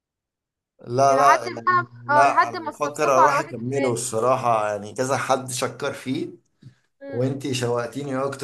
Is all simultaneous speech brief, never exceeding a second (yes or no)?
no